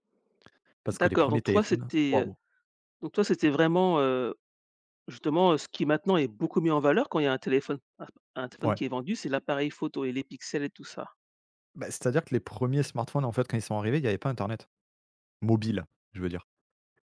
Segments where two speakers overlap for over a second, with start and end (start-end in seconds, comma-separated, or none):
0.9-2.3